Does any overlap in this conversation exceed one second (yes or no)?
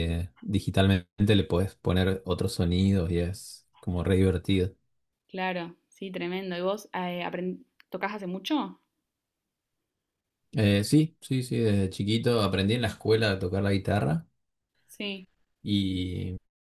no